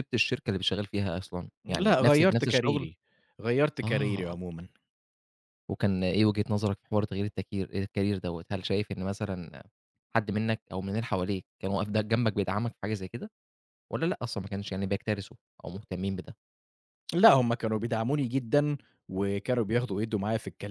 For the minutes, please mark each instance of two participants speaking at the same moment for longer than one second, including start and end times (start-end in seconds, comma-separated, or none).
1.6-2.9